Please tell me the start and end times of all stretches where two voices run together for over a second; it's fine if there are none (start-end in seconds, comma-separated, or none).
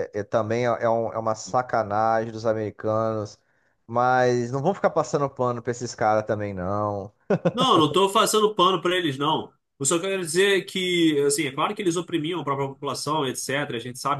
none